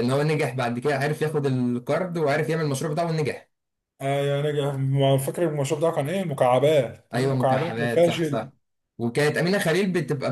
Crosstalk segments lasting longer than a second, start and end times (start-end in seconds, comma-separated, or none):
7.1-8.5